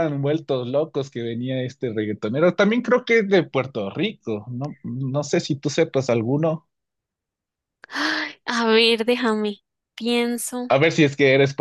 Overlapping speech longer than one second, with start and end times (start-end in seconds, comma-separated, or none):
none